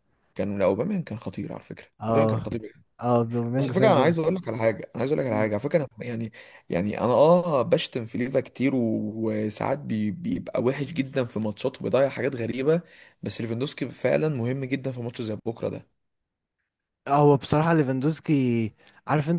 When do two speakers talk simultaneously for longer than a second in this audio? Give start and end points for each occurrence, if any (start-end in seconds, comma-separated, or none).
none